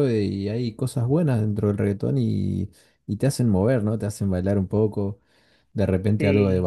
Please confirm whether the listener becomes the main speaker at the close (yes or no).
no